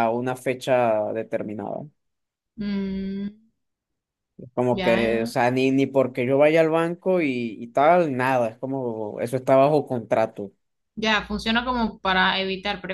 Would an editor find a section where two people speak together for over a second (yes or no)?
no